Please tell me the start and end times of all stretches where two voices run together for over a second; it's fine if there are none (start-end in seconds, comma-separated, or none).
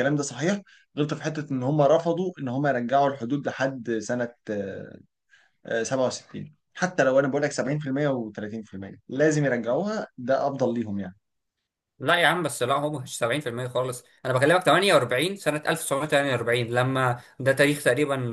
none